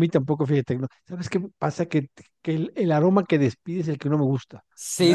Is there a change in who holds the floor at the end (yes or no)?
yes